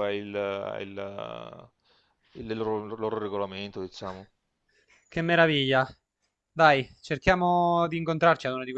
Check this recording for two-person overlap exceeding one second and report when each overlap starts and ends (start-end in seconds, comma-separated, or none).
none